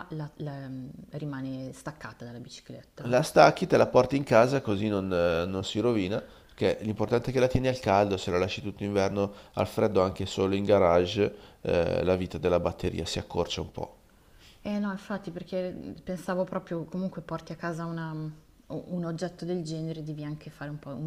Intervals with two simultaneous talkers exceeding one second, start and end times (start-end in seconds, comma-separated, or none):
none